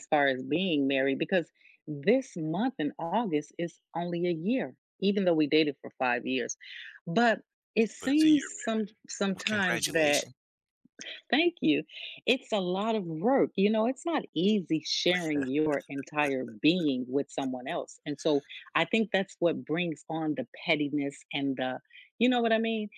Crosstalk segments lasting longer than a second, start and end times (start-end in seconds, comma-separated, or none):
8.0-10.3